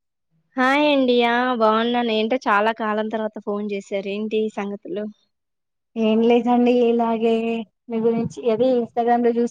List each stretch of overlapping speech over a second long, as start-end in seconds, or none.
none